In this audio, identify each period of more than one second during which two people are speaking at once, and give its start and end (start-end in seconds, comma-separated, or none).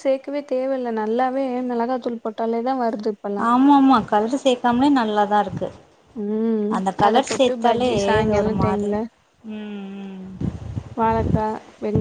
7.1-8.9